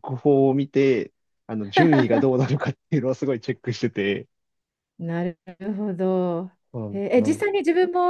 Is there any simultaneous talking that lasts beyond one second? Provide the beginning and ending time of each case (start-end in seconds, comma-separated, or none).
none